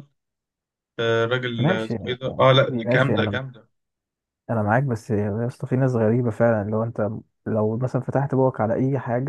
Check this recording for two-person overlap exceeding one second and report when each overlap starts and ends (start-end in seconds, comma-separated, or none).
1.6-3.4